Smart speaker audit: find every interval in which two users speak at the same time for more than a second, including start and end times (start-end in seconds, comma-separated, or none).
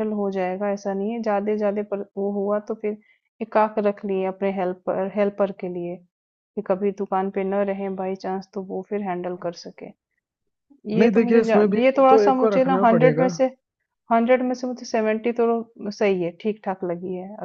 11.0-13.3